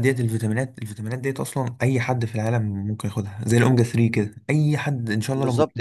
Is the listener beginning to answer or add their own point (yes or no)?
yes